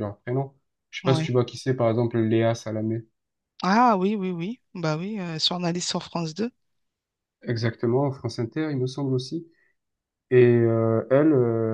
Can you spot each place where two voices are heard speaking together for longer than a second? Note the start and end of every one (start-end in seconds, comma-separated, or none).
none